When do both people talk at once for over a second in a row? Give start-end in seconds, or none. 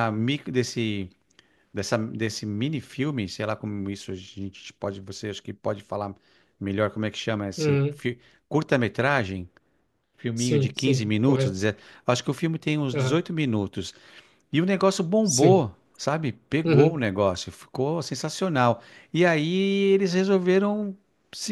10.3-11.6